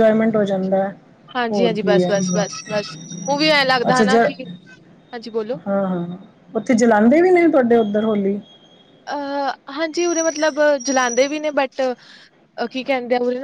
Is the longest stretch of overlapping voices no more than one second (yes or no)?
yes